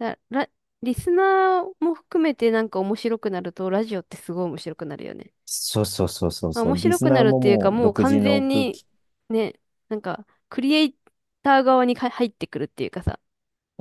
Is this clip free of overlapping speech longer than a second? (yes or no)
no